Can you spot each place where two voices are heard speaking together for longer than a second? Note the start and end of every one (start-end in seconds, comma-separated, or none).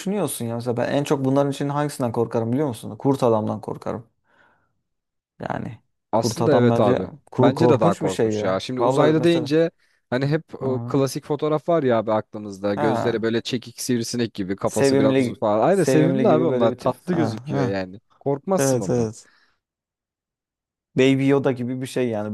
6.2-9.5, 14.7-17.8